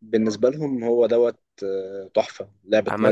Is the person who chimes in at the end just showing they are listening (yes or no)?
no